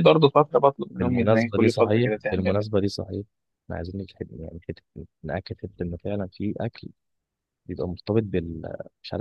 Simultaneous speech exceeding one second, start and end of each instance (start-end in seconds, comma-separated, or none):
1.0-2.6